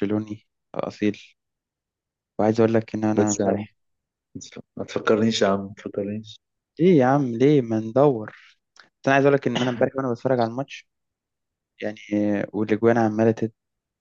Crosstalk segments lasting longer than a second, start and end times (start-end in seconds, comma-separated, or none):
none